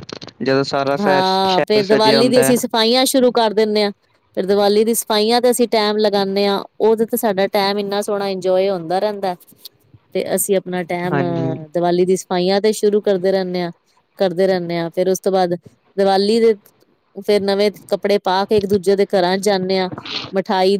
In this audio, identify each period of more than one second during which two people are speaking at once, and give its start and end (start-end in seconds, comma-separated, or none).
1.0-2.5